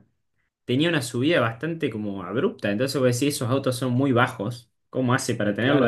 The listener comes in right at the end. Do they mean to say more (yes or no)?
yes